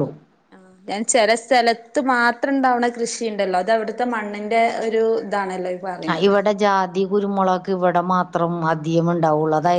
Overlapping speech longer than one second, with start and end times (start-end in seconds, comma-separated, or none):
none